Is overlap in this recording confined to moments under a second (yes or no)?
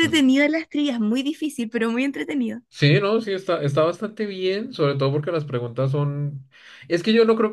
yes